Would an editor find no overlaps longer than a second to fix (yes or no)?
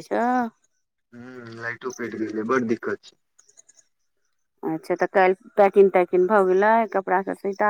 yes